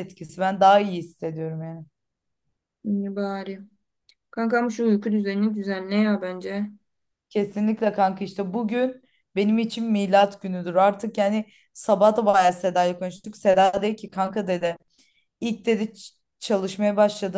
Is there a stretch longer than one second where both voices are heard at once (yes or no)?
no